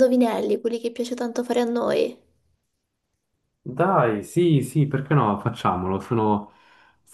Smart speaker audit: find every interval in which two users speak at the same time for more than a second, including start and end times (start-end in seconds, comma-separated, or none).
none